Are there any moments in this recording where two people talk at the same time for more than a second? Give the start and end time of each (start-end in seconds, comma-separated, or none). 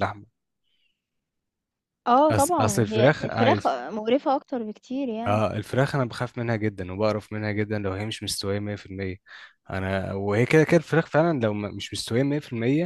2.3-3.8